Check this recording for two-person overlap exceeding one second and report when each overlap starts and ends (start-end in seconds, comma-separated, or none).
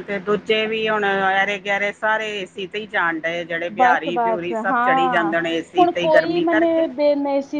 3.8-5.3